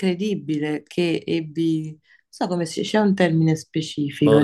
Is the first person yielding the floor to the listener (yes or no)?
yes